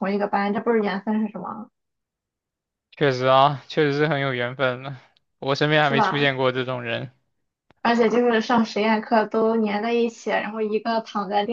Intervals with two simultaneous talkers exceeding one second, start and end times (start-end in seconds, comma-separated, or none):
none